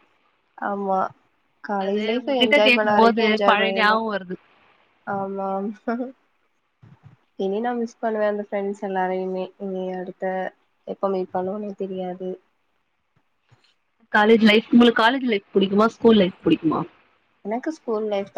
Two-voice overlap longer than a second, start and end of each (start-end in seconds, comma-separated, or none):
1.8-4.0